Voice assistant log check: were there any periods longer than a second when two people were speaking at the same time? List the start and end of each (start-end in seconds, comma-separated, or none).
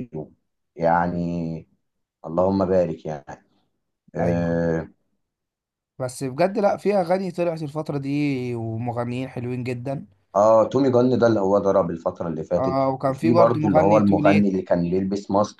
12.6-14.5